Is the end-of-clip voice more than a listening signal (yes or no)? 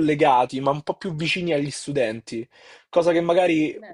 no